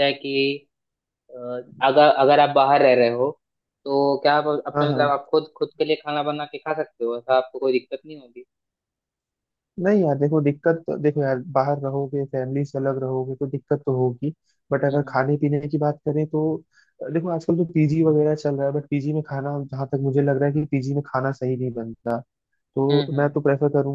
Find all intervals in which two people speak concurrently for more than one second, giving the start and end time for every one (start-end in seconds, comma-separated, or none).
none